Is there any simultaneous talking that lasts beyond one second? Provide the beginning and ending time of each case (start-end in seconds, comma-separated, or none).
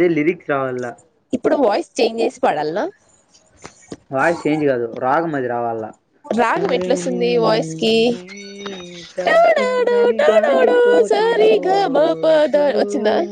9.3-12.6